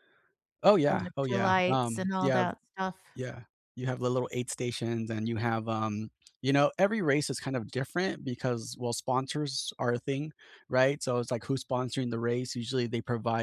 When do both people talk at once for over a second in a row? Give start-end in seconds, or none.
0.9-2.5